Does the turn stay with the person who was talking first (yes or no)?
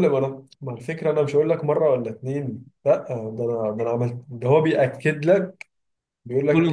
yes